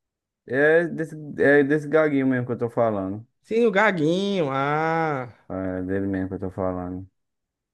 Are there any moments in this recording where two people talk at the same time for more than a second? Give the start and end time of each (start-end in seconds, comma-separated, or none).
none